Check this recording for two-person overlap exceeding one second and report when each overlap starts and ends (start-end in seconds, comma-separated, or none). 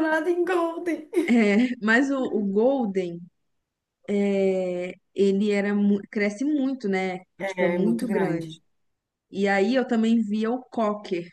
7.4-8.6